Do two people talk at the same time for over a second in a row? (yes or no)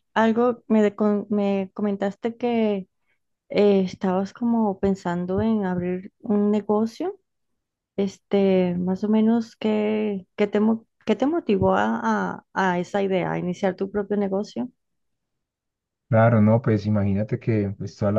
no